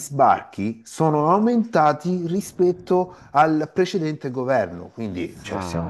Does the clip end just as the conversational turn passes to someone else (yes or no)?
no